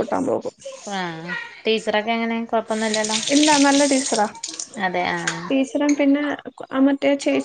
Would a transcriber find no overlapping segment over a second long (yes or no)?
yes